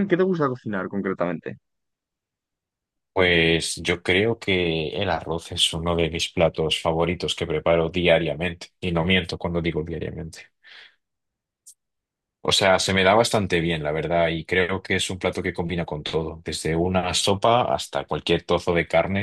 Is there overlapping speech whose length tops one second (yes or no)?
no